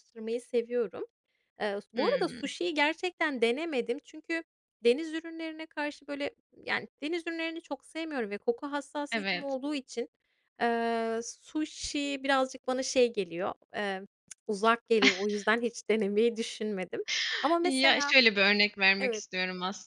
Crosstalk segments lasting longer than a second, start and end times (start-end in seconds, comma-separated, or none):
none